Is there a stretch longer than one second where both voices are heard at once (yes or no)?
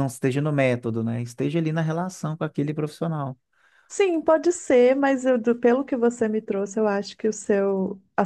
no